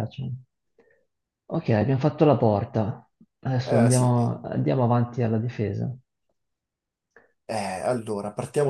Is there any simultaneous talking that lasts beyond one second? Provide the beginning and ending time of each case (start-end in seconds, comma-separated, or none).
none